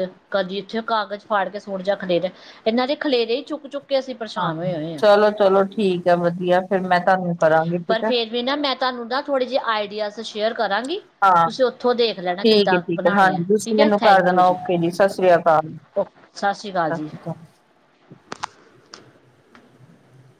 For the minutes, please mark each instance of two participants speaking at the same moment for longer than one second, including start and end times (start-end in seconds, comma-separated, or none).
12.4-14.6